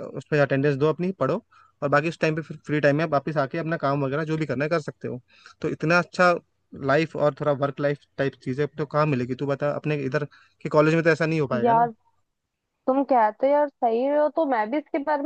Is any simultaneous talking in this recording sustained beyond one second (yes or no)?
no